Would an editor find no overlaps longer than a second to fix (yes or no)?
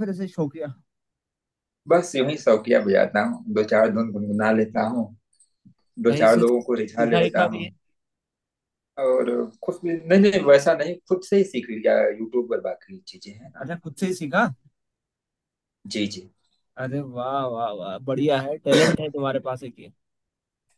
no